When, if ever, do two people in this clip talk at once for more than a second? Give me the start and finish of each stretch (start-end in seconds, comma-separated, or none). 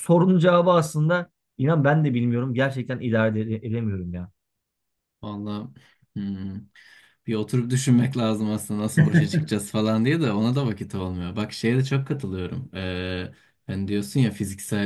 none